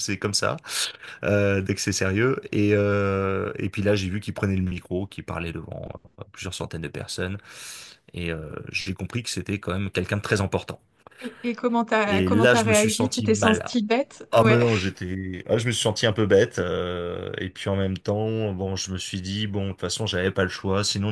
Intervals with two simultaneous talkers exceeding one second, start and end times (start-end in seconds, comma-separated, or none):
12.1-13.7